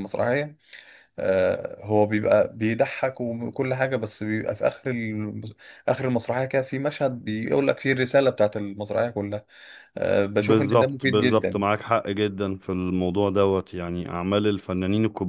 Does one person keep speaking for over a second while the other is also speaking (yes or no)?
yes